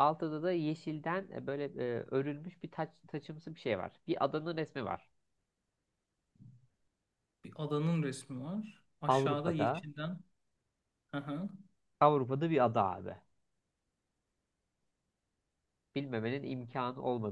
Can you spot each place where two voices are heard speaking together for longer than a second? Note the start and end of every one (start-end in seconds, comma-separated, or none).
none